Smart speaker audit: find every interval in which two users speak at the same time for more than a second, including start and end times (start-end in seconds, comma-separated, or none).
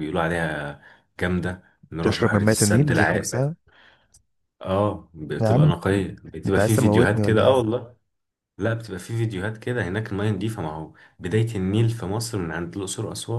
2.0-3.5, 6.5-7.7